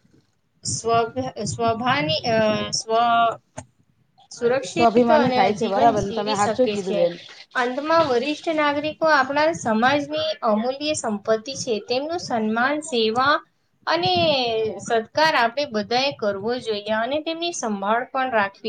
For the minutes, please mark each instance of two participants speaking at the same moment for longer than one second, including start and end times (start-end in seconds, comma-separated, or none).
4.7-7.0